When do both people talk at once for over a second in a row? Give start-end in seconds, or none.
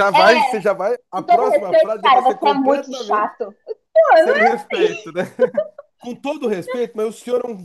1.2-3.3